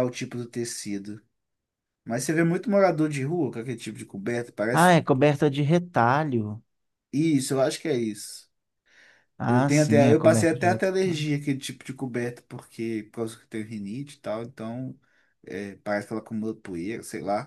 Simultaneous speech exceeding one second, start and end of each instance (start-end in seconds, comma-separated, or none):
9.5-11.3